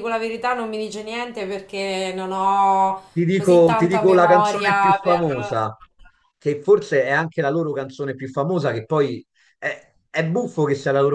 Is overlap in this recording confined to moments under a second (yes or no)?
no